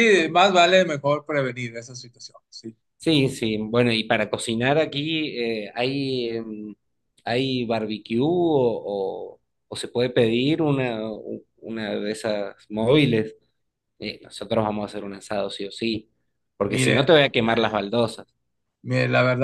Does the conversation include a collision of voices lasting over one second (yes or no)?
no